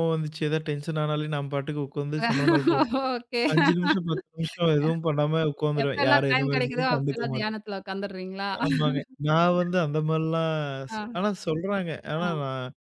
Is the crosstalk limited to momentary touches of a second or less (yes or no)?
no